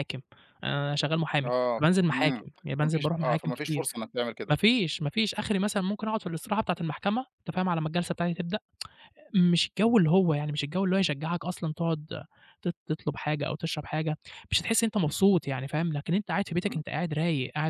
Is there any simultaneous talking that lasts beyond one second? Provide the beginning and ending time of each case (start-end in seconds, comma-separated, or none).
1.4-3.8